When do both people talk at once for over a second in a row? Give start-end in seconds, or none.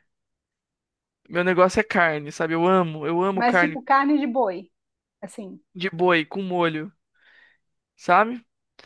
none